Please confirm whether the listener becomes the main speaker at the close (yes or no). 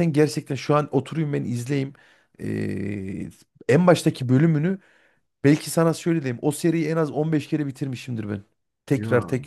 no